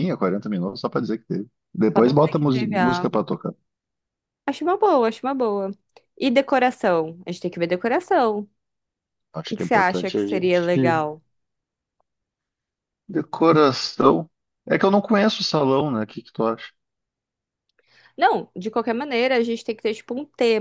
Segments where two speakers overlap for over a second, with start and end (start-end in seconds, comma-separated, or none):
1.9-3.2, 9.4-10.7